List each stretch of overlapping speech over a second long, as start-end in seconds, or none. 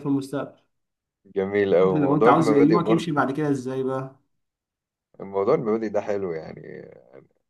1.9-3.2